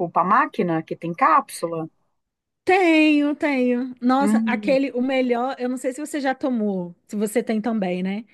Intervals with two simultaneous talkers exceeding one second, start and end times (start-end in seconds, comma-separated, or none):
none